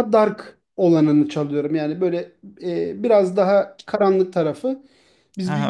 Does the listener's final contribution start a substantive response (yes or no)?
yes